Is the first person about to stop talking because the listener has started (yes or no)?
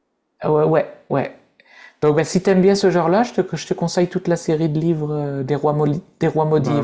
yes